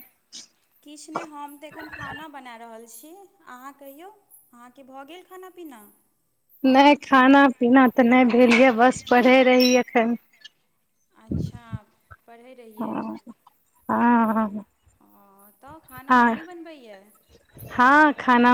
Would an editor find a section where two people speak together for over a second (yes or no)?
no